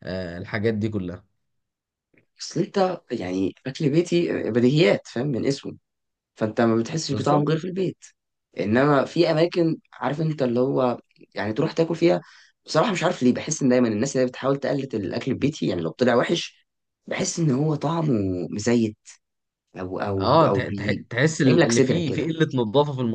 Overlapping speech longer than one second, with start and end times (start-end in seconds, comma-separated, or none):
20.2-22.3